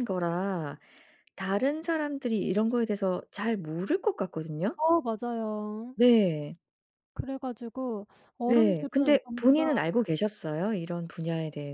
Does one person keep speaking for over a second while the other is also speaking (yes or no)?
yes